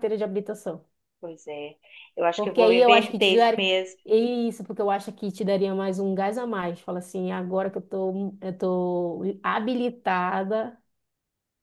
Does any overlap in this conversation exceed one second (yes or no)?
yes